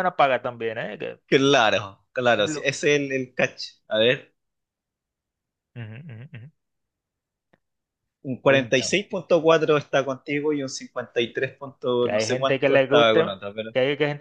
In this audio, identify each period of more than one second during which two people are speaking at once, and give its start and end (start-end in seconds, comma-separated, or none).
12.0-13.7